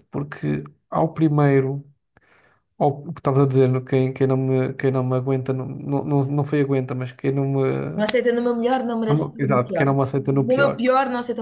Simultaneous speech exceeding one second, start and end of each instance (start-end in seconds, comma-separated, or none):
9.1-10.8